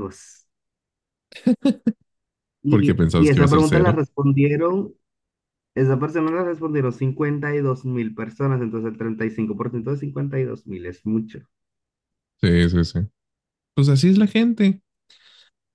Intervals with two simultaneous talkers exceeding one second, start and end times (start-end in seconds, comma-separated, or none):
2.7-4.0